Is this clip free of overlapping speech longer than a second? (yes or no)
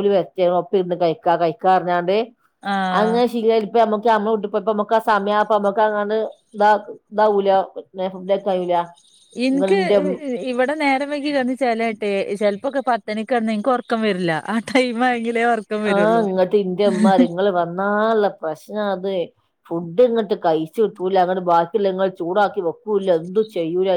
yes